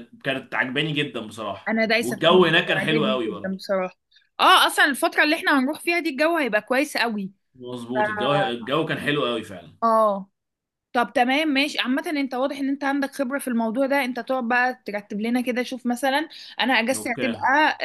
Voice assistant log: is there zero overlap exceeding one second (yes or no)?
no